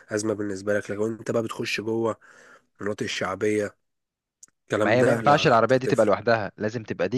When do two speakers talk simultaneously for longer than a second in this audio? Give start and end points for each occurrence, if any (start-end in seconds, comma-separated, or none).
4.8-6.1